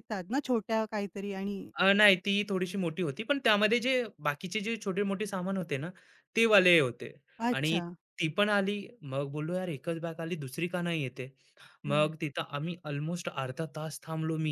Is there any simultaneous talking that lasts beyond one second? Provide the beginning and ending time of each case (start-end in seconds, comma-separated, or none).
none